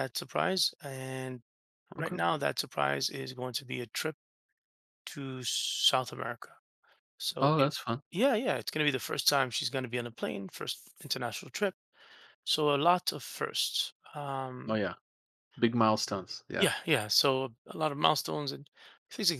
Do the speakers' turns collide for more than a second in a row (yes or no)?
no